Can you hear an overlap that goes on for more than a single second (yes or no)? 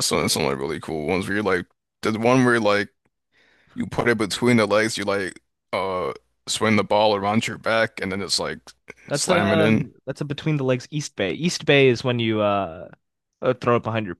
no